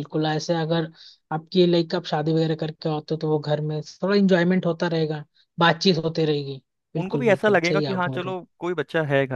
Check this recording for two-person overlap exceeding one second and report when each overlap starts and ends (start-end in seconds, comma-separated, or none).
7.0-8.3